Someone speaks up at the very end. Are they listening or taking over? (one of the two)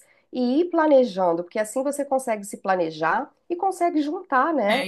taking over